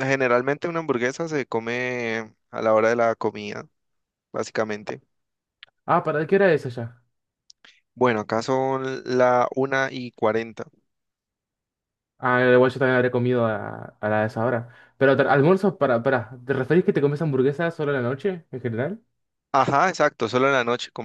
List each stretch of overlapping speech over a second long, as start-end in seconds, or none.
none